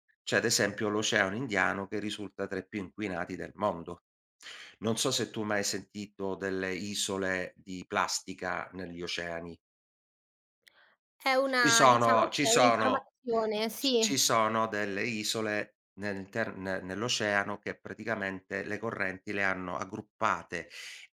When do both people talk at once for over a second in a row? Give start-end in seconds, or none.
11.6-13.1